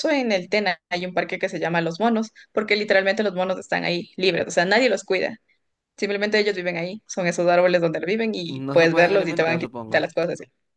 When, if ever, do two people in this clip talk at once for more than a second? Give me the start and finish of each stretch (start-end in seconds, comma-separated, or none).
8.5-10.1